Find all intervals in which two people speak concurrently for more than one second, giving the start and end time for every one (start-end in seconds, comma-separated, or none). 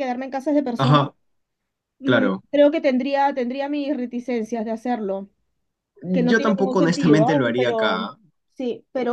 6.3-8.1